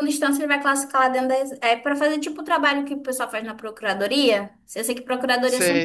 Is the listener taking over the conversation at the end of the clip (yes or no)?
no